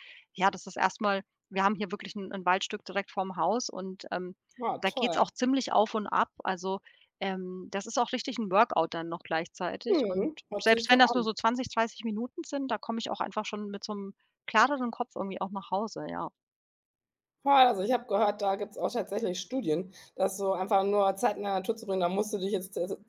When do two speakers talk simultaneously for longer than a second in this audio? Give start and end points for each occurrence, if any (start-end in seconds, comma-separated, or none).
9.9-11.3